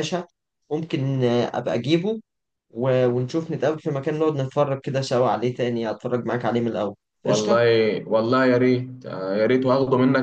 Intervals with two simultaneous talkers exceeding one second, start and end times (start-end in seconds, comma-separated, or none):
none